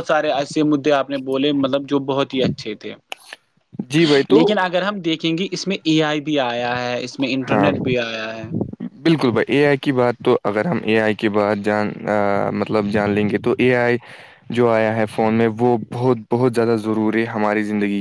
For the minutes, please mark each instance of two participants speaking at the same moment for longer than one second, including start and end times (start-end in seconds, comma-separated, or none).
none